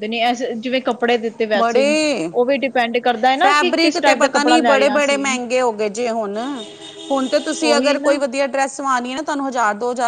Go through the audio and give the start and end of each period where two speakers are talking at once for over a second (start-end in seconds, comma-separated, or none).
3.4-5.4